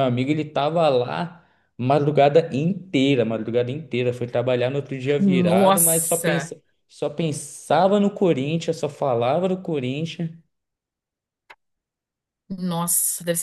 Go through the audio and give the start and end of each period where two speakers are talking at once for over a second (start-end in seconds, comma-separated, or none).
5.2-6.5